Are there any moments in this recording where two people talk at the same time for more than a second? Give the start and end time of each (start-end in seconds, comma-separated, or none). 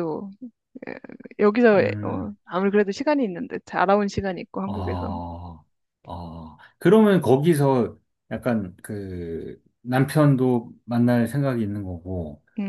none